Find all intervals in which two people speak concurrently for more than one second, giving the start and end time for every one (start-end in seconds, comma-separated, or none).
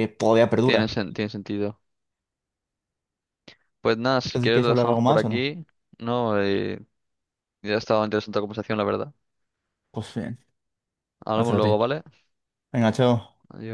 4.3-5.5